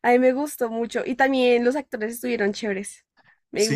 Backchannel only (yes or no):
no